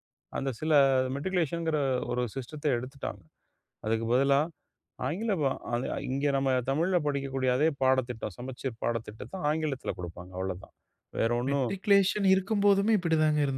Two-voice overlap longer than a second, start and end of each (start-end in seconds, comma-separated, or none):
none